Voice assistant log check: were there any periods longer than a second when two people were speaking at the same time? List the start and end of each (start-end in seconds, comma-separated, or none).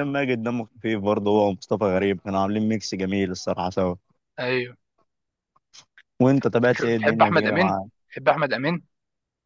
6.6-7.8